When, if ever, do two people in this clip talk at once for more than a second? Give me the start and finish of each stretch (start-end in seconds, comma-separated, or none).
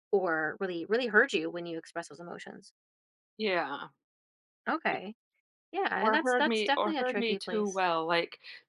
6.0-7.8